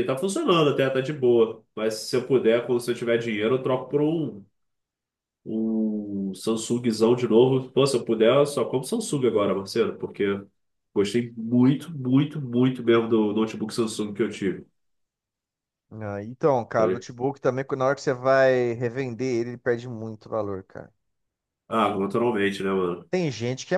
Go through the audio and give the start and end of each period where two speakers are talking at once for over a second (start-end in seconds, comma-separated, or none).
none